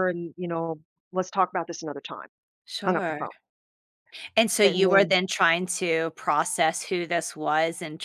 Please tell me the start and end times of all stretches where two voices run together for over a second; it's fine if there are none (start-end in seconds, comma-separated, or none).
none